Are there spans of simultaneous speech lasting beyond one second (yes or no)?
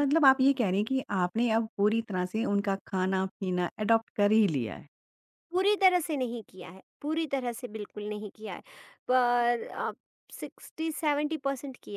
no